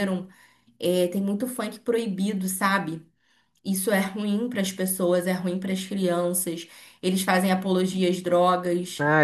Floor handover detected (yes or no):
yes